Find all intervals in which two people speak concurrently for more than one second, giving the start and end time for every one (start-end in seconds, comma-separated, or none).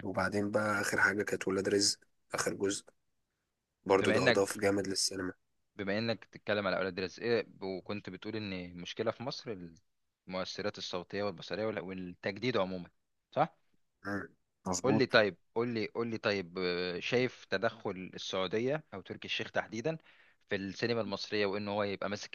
none